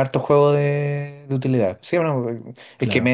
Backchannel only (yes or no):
yes